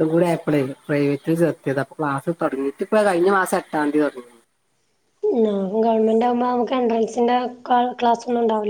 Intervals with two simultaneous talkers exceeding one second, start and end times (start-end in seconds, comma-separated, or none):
none